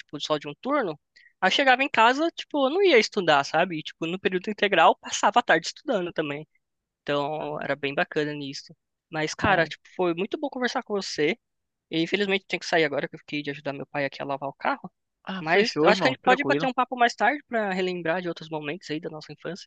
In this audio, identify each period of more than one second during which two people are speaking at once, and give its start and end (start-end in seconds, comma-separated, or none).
15.4-16.7